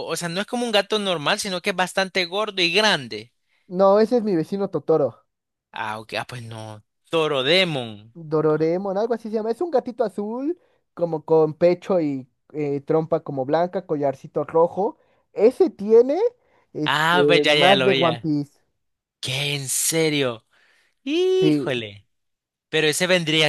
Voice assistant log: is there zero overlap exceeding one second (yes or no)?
no